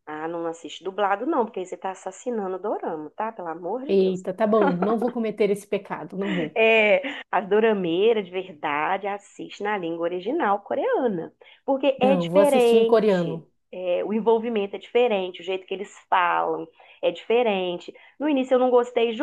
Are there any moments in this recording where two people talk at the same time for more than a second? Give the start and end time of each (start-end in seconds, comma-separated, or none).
12.0-13.5